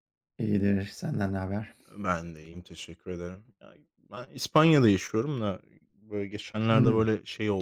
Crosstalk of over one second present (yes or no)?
no